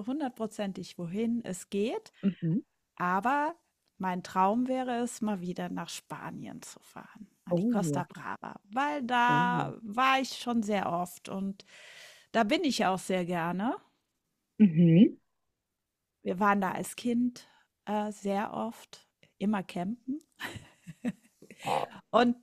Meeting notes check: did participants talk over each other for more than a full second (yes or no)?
no